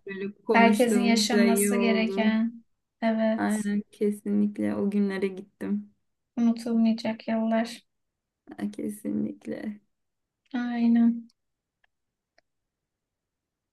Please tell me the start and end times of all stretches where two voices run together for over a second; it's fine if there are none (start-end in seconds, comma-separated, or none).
0.5-2.4